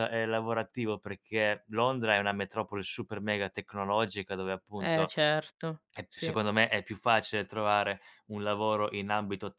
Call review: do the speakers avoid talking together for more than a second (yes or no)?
yes